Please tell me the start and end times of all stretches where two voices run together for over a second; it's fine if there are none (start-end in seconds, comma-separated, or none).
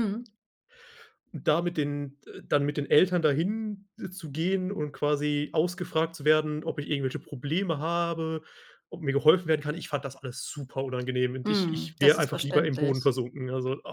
11.4-13.1